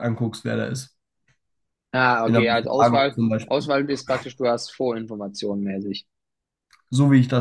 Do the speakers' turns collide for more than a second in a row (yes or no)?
yes